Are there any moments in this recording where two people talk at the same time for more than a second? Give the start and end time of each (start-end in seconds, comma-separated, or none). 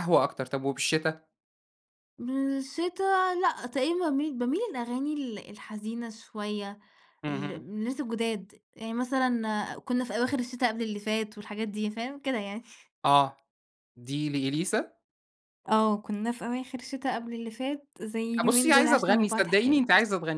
18.4-19.9